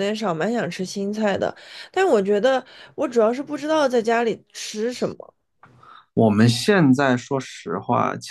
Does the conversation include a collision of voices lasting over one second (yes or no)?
no